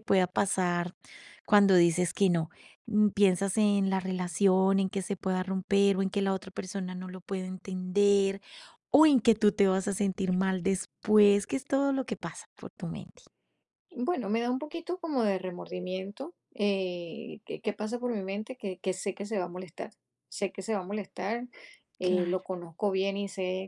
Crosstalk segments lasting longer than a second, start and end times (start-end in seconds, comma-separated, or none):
none